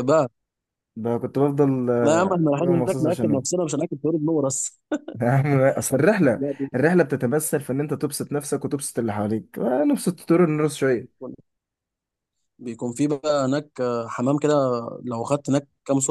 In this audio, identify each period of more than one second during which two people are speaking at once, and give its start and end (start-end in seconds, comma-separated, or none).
2.0-3.5